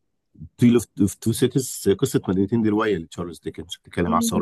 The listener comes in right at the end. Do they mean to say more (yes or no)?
no